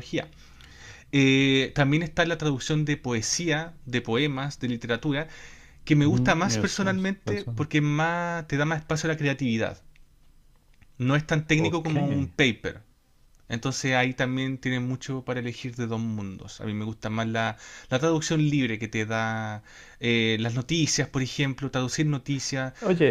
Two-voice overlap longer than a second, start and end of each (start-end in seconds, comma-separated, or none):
6.0-7.7